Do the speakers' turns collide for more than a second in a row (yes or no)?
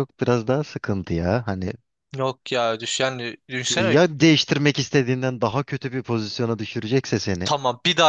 no